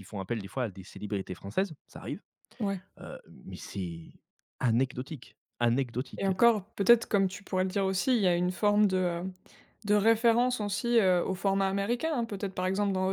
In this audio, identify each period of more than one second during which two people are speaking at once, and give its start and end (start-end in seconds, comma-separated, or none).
none